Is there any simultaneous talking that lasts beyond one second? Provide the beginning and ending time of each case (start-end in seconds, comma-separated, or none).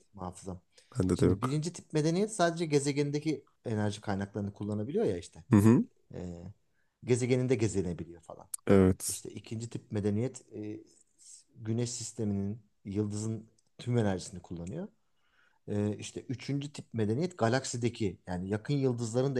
none